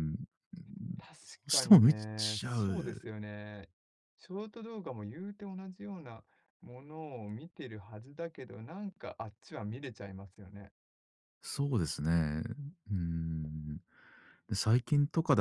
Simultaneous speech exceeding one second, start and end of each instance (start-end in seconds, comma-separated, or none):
1.5-3.0